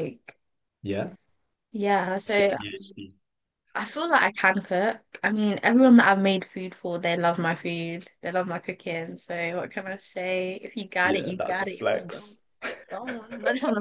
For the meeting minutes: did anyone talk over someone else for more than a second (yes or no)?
yes